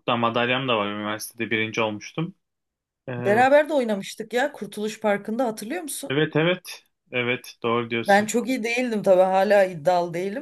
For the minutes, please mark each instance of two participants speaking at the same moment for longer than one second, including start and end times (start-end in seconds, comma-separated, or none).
none